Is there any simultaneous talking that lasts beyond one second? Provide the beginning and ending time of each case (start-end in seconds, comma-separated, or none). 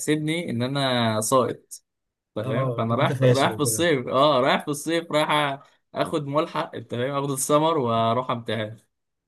2.4-3.9